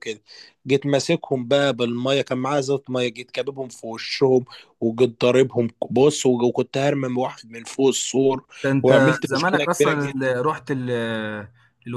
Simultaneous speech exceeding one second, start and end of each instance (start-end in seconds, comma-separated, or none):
8.8-10.3